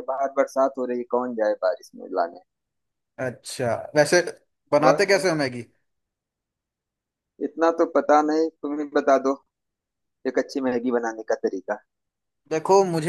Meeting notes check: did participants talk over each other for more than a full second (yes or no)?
no